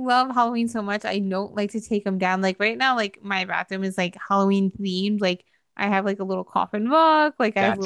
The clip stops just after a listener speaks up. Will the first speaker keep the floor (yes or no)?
yes